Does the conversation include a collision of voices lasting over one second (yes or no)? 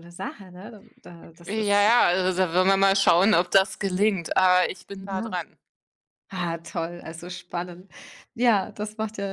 no